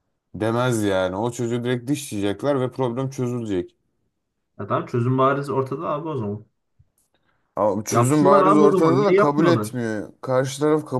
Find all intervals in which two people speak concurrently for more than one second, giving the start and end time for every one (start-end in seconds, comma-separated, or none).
7.9-9.8